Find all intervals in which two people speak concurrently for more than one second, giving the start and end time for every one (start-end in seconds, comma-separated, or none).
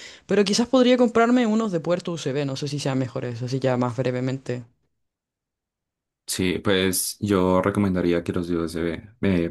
none